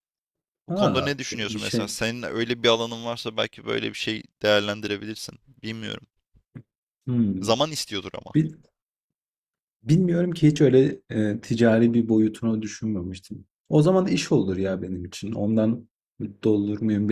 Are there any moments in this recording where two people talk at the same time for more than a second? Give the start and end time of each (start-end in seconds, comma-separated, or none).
0.7-1.9